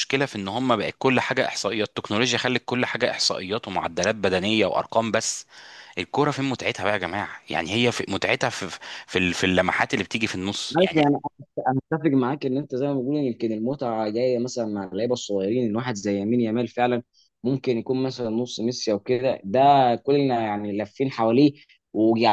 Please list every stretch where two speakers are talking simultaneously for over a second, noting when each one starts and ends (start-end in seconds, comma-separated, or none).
none